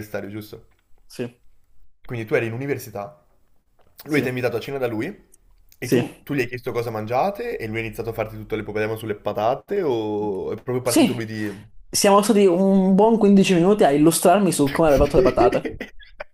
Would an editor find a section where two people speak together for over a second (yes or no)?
no